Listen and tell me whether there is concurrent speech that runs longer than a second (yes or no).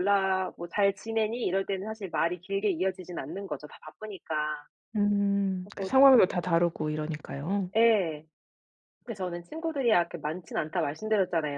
no